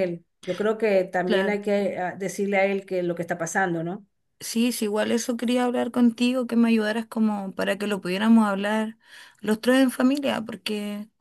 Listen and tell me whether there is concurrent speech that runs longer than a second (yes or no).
no